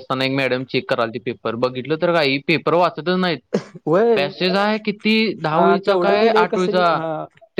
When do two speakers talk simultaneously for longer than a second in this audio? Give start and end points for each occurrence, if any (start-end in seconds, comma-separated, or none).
5.5-7.0